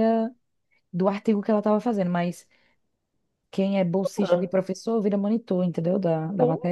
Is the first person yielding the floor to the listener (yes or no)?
yes